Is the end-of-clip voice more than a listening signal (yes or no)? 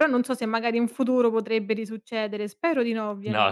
yes